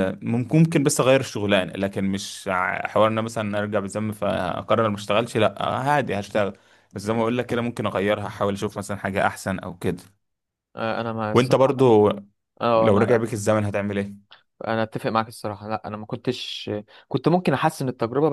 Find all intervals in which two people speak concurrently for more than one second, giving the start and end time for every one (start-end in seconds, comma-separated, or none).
none